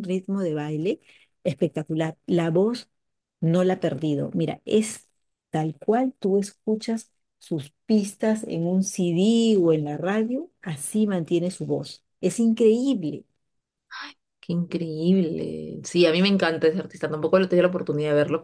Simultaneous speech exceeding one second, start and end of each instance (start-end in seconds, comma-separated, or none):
none